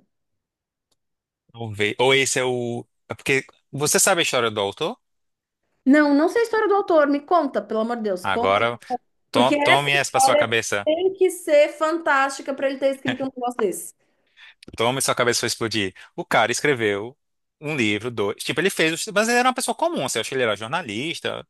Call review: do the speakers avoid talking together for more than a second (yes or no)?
no